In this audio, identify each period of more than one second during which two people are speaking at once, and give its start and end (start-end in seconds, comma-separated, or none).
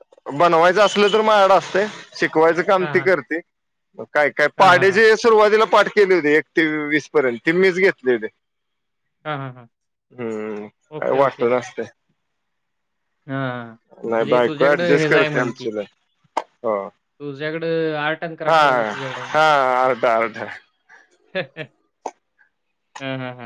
14.2-15.7